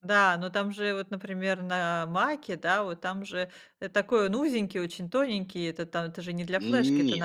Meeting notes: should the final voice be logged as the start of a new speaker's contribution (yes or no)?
yes